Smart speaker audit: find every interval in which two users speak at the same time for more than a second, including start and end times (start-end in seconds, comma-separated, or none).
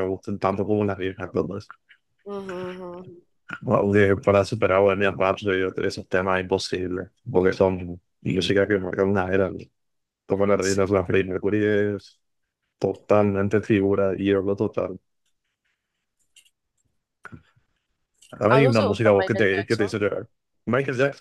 18.5-19.9